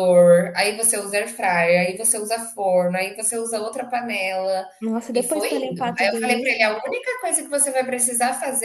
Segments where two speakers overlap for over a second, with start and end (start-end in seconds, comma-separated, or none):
5.1-6.5